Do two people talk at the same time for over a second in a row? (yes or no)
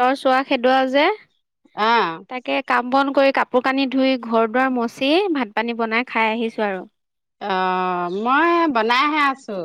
no